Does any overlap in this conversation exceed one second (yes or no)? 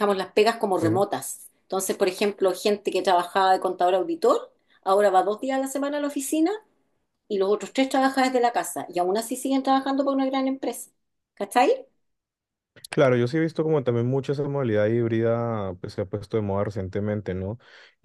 no